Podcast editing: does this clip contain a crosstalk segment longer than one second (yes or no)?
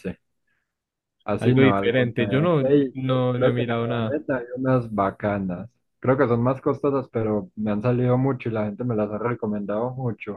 yes